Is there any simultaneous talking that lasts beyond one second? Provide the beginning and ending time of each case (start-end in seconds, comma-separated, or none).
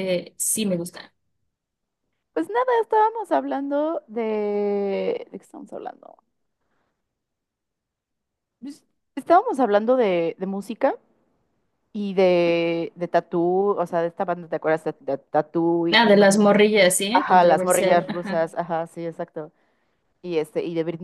17.1-18.4